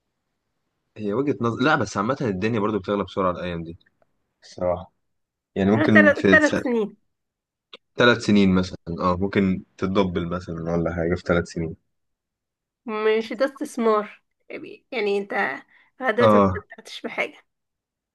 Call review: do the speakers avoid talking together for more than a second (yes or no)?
yes